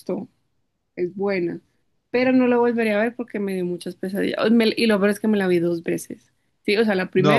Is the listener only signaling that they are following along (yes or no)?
yes